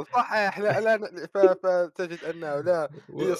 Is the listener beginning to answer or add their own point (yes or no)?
no